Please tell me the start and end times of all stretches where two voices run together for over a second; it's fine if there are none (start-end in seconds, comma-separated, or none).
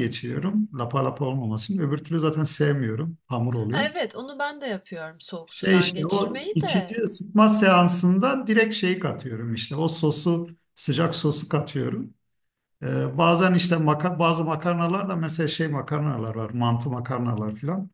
5.5-7.0